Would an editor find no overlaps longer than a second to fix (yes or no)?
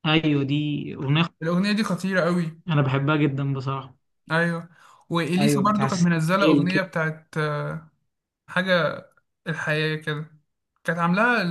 no